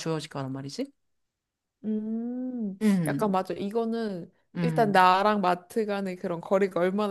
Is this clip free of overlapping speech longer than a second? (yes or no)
yes